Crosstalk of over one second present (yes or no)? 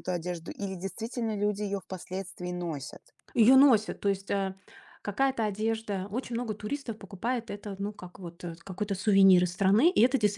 no